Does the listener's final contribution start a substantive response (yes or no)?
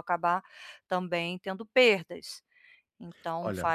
no